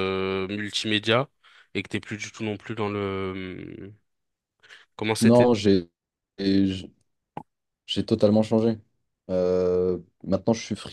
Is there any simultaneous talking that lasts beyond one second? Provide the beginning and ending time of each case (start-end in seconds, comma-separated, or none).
none